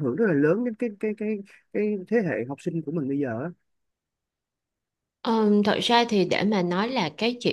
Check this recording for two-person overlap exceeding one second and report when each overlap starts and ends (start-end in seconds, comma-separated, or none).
none